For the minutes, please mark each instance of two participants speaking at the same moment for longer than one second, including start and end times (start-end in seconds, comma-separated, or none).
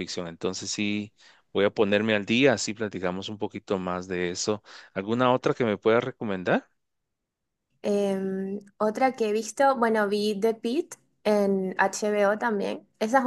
none